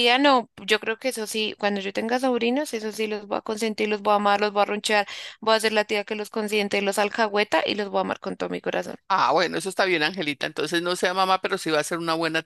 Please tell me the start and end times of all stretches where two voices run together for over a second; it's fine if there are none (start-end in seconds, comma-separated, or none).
none